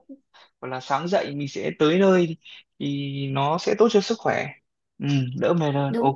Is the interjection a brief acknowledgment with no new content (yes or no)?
yes